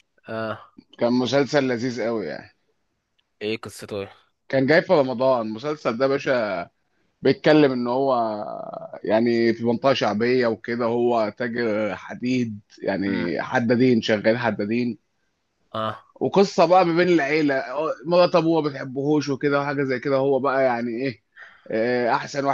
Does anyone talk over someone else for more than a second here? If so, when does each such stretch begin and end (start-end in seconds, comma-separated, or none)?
none